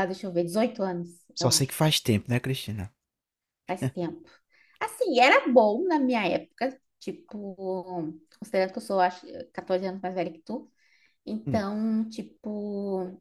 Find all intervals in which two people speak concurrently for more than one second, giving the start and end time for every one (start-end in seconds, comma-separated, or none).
none